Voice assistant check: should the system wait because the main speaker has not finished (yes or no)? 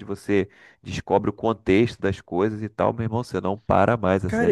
no